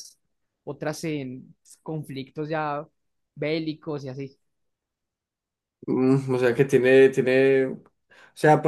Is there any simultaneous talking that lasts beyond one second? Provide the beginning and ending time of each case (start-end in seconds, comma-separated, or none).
none